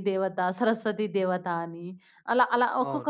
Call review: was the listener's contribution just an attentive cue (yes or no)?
yes